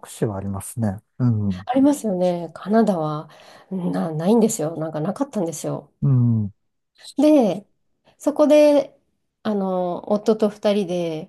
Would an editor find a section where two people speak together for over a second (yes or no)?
no